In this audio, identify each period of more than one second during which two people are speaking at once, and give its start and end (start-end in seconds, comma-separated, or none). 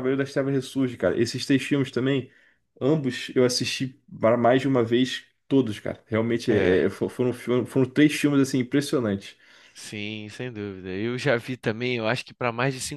none